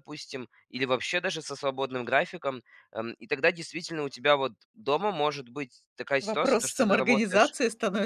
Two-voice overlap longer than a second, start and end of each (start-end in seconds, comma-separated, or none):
6.2-7.6